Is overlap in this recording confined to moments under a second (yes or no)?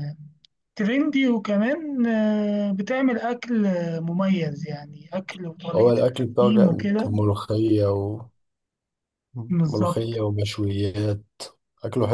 no